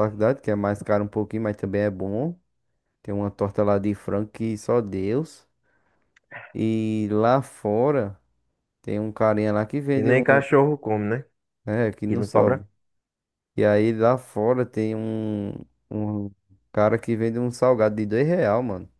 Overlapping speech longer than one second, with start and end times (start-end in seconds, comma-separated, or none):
none